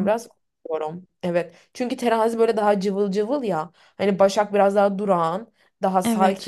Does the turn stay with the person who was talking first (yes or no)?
yes